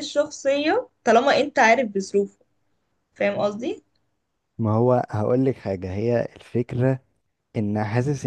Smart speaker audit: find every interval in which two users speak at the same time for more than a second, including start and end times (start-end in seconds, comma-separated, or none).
none